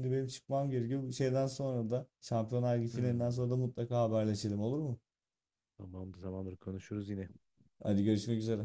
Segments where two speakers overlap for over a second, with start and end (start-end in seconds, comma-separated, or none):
none